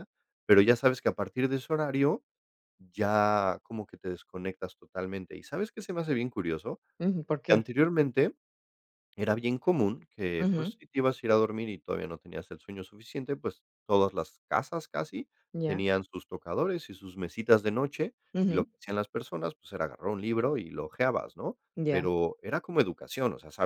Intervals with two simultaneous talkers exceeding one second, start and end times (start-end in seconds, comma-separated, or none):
none